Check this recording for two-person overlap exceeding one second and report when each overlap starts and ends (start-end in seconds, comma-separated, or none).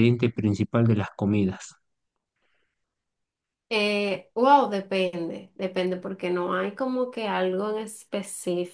none